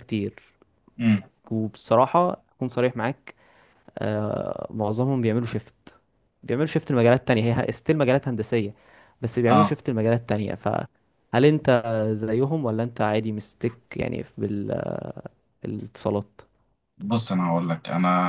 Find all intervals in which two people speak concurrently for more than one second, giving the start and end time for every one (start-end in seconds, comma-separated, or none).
none